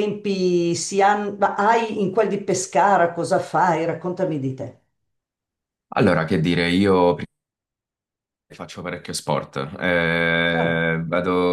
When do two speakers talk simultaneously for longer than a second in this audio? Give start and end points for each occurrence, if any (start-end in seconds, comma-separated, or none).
none